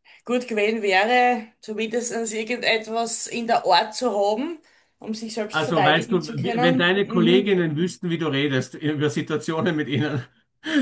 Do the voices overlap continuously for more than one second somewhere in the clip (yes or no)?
yes